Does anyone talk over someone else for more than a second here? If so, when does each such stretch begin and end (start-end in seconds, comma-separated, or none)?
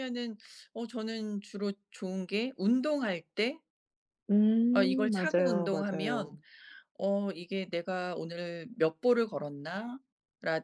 4.7-6.4